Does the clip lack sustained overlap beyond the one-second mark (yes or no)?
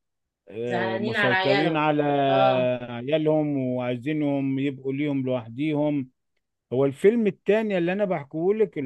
no